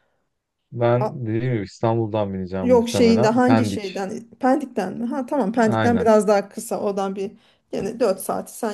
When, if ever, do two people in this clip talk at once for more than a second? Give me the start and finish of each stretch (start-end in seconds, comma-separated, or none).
2.6-3.8